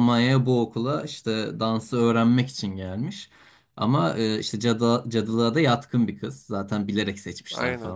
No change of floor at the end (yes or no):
yes